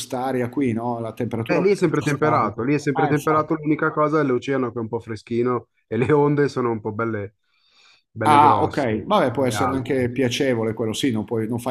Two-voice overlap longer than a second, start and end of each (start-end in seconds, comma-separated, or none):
1.5-3.5, 8.3-10.1